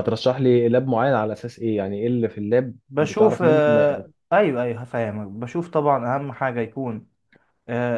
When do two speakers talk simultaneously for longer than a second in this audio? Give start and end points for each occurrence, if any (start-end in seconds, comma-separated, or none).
2.9-4.1